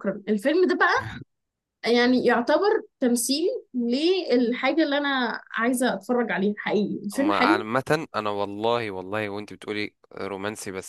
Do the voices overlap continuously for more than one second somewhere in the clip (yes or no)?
no